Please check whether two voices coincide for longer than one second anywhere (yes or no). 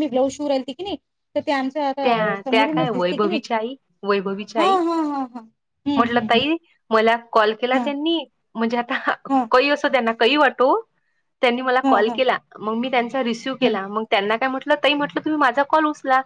yes